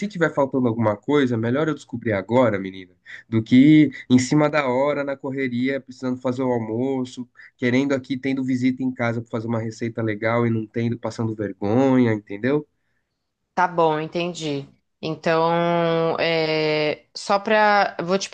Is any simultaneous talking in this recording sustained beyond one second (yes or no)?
no